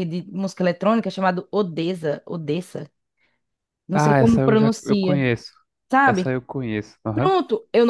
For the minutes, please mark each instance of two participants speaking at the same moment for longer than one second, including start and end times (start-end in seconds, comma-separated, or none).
3.9-5.2